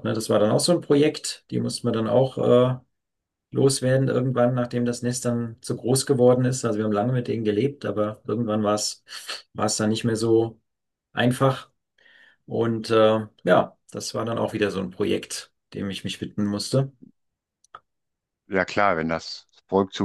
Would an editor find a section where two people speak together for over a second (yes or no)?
no